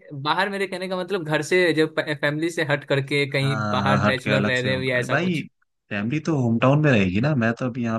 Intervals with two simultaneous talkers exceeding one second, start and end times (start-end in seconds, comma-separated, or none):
3.4-5.4